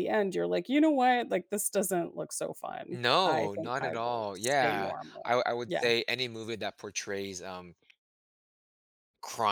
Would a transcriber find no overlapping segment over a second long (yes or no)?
no